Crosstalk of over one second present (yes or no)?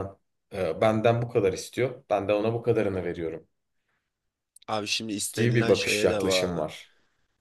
yes